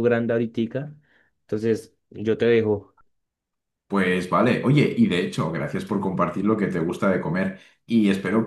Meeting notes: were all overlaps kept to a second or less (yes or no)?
yes